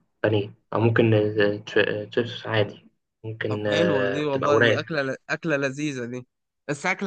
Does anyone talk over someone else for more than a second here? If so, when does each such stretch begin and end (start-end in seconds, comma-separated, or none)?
3.5-4.8